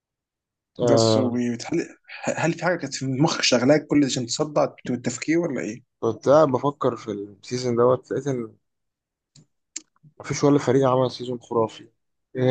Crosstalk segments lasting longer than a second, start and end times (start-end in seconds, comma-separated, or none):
none